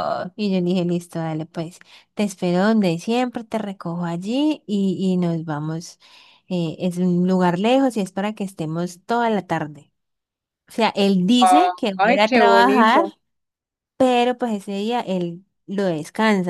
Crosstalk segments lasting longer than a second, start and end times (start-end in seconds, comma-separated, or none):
11.4-13.1